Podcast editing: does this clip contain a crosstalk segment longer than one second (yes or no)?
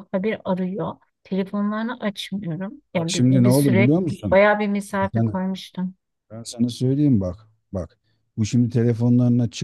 yes